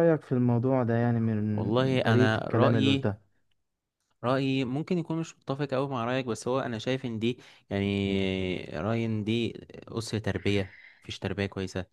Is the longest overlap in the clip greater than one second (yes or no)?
yes